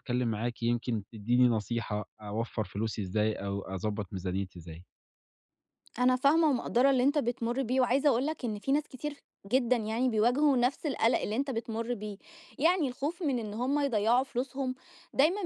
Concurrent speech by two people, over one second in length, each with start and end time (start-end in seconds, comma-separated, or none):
none